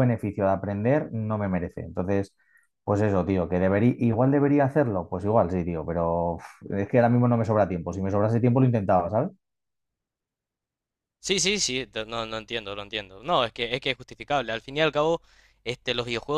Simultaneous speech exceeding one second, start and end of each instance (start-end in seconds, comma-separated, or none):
none